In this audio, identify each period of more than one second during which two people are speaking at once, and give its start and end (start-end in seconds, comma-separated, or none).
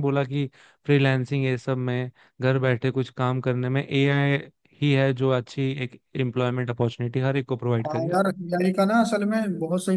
none